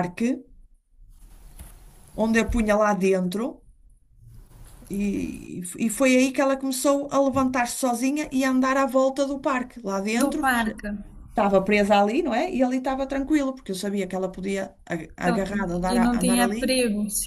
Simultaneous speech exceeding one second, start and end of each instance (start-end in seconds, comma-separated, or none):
15.2-16.8